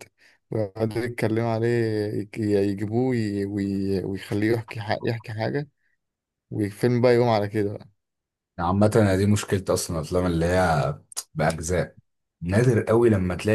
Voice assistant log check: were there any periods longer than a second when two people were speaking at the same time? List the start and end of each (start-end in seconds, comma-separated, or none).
none